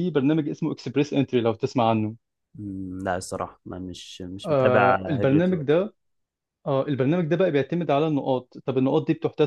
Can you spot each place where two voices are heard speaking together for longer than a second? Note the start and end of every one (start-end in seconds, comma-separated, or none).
4.4-5.9